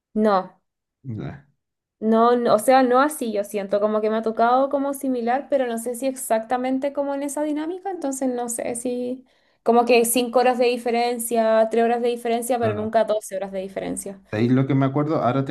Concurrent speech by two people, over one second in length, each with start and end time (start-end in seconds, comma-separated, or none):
none